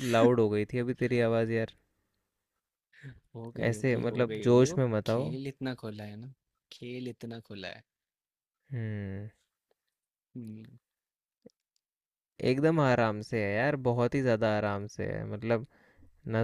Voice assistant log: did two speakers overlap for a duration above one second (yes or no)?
yes